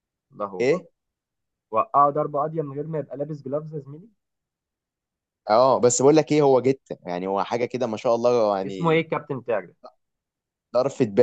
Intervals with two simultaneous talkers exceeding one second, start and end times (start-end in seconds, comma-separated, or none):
none